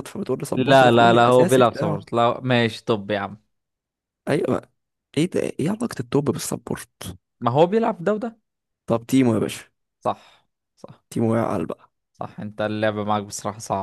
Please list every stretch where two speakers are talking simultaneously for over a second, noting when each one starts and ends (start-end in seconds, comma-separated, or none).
0.6-2.0